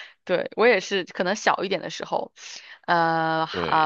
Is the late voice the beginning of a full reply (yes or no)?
no